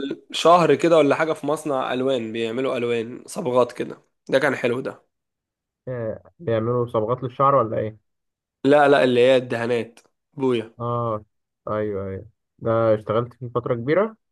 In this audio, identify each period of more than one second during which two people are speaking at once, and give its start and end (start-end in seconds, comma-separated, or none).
none